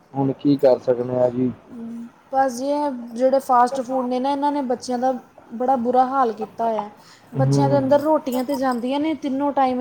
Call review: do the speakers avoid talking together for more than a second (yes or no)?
yes